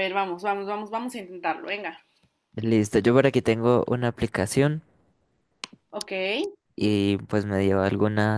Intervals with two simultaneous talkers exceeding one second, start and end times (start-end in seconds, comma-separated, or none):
none